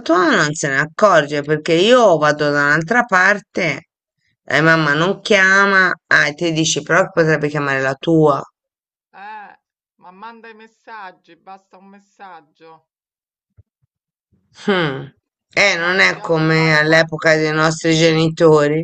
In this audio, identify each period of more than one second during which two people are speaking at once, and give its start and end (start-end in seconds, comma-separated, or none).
15.7-17.4